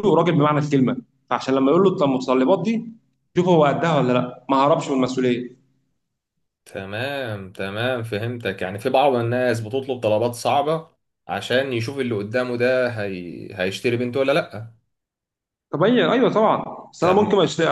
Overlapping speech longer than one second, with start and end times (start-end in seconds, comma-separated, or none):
none